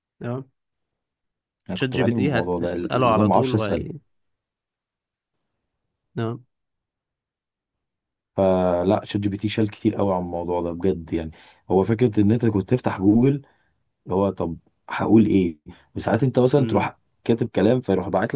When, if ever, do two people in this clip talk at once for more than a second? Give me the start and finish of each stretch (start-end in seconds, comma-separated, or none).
1.7-3.8